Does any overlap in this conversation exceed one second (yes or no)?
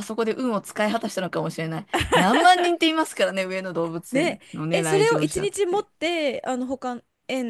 yes